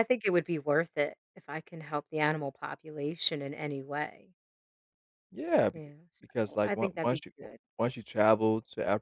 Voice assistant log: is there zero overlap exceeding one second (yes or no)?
no